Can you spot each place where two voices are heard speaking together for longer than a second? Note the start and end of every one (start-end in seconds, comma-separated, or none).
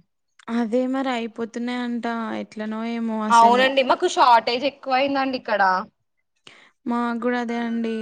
none